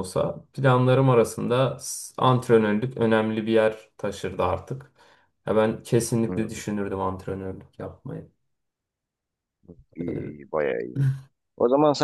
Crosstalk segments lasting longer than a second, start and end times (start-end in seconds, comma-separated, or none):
none